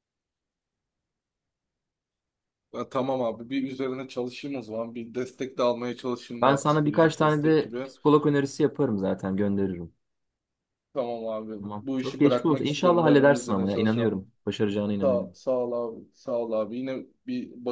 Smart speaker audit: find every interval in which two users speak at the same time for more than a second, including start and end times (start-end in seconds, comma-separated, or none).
6.4-7.9, 11.6-14.1